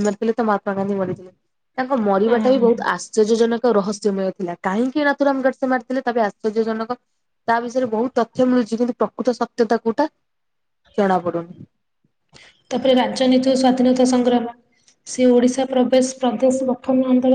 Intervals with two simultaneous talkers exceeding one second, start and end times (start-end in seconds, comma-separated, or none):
none